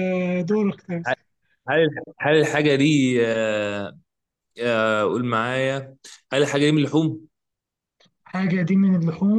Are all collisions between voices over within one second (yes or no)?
yes